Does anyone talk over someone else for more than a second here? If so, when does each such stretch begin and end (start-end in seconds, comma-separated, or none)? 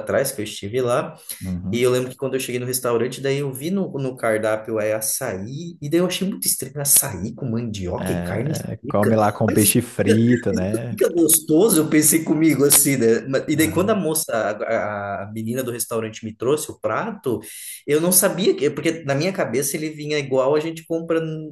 8.0-11.0